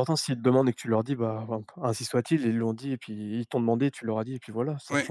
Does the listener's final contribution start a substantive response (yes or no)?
yes